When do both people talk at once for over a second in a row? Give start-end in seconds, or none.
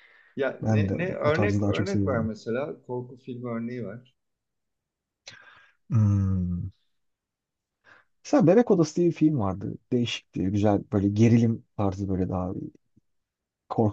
0.6-2.3